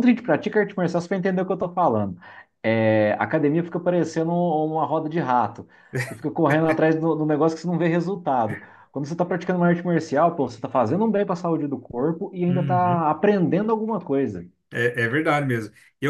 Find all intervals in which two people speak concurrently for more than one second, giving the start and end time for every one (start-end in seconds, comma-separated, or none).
none